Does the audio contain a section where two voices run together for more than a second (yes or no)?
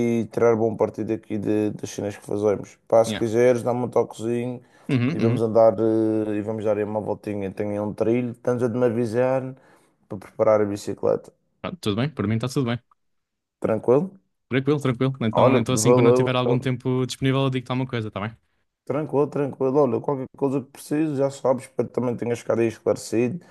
yes